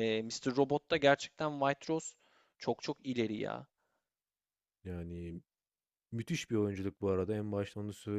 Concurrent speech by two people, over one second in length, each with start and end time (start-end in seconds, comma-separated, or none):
none